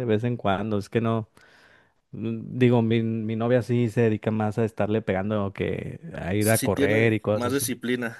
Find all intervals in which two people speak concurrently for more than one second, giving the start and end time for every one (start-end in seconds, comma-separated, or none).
6.4-7.7